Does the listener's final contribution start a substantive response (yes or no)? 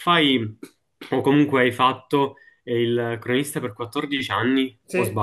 yes